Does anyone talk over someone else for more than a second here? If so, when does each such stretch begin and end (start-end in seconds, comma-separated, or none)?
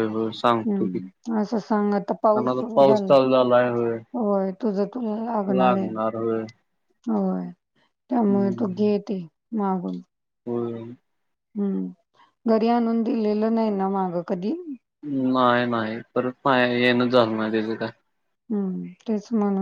0.7-3.1